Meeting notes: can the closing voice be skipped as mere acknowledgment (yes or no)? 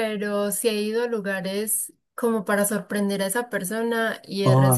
yes